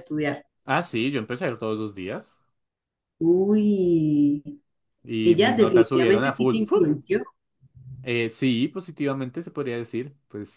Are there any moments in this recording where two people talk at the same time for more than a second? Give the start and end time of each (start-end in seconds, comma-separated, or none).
5.2-6.9